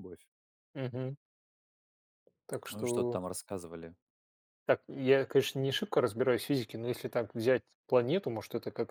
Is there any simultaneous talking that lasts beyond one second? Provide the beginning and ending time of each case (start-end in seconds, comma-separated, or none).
none